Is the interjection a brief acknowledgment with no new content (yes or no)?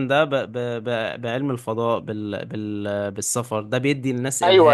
yes